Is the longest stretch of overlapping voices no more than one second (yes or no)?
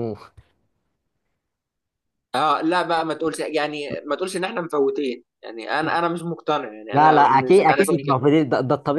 no